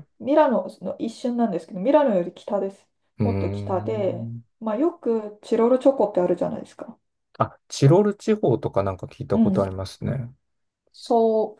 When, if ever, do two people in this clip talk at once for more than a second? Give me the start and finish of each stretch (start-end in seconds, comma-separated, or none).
3.2-4.4